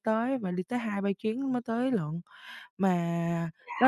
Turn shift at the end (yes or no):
no